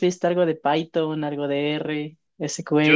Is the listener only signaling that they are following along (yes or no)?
no